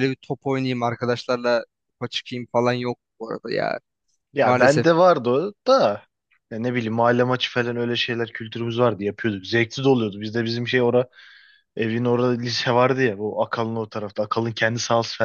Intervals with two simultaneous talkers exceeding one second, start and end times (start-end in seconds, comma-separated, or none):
none